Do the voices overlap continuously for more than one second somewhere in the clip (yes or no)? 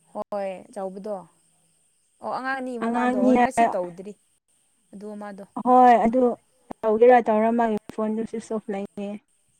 no